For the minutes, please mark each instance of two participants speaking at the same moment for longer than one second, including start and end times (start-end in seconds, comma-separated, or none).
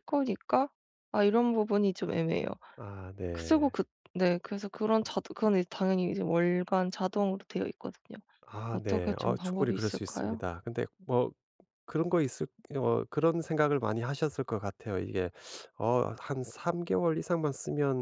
8.7-10.4